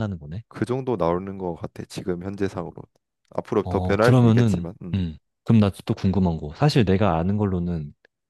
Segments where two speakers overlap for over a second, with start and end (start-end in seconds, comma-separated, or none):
3.6-5.0